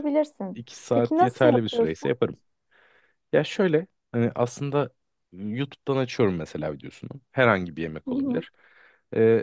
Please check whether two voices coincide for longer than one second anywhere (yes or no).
yes